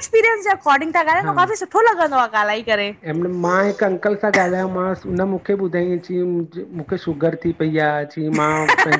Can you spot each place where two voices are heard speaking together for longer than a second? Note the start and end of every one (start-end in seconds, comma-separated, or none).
none